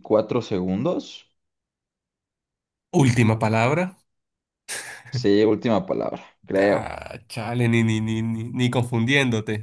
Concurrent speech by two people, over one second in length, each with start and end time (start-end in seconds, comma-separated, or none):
none